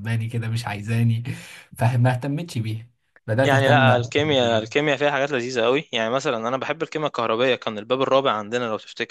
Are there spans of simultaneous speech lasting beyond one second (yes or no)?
yes